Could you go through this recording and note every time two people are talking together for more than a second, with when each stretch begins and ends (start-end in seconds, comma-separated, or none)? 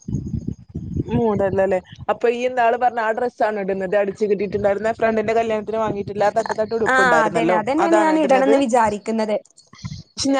6.9-8.5